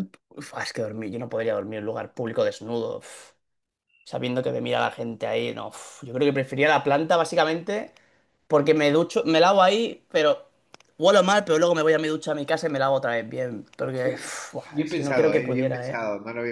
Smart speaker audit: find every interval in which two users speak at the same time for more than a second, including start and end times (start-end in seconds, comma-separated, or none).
14.0-16.0